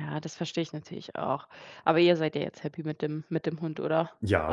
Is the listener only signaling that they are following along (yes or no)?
no